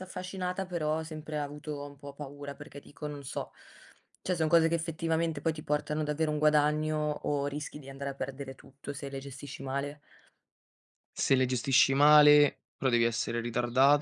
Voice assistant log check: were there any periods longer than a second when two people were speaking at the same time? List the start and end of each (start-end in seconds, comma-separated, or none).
none